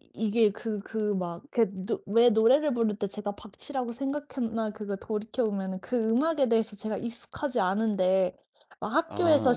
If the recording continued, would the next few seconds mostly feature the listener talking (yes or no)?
no